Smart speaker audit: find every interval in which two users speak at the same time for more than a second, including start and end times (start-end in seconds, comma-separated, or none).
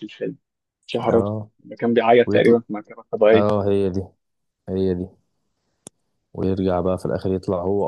none